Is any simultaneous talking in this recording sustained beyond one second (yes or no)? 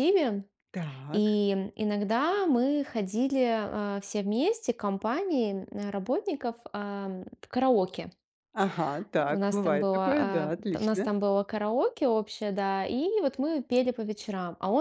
yes